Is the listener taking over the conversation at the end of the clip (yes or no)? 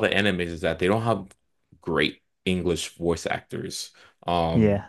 no